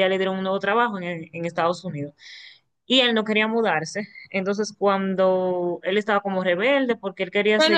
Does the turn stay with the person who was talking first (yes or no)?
no